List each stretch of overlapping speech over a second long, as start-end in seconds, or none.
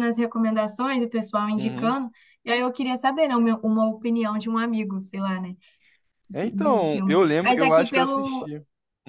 6.3-8.5